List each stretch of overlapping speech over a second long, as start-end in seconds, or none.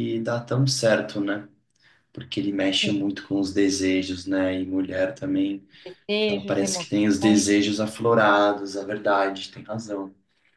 6.3-7.5